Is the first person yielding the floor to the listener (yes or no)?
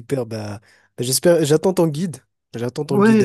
yes